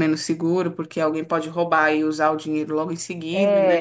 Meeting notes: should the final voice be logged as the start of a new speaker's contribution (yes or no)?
yes